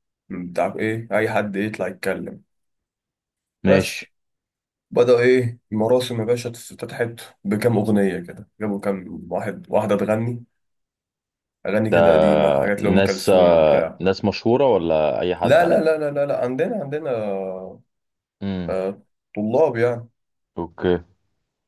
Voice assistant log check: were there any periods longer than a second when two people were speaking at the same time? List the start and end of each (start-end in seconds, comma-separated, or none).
12.8-14.0